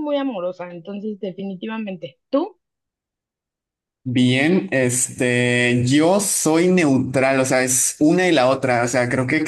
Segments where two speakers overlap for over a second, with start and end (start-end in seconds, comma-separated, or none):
none